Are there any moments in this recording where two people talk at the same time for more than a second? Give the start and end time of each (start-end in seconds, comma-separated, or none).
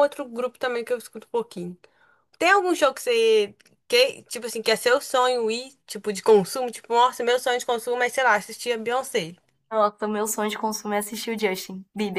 none